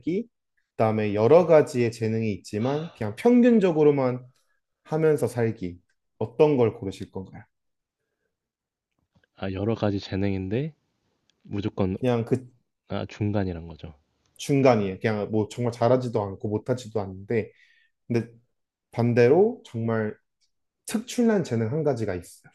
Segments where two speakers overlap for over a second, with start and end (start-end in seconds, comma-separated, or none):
none